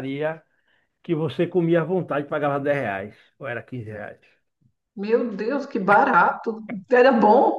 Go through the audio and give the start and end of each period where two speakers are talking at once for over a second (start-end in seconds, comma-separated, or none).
none